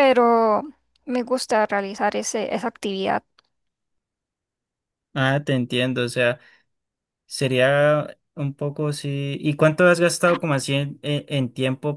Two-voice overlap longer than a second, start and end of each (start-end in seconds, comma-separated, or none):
none